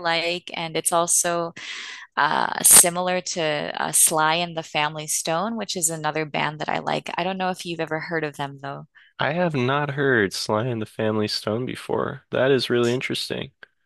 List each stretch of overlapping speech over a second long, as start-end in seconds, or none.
none